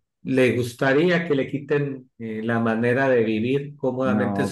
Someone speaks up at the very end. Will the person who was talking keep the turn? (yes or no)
yes